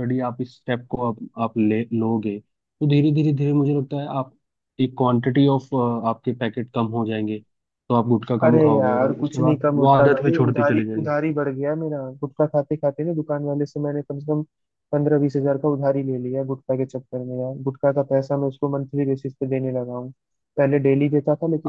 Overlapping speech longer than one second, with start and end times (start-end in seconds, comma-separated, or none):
8.4-11.1